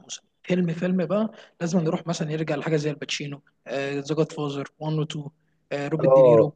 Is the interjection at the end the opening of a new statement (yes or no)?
yes